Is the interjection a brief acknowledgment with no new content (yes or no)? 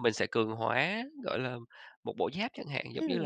no